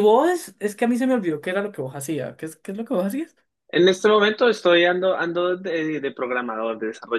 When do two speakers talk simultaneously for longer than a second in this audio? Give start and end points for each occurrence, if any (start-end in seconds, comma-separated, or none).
none